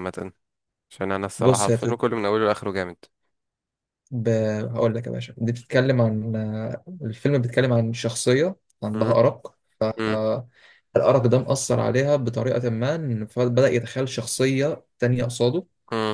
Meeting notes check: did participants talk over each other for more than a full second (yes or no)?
no